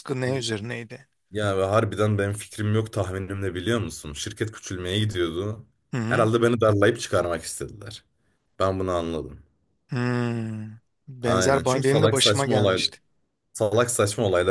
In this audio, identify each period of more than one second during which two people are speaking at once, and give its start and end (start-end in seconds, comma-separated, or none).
11.2-12.8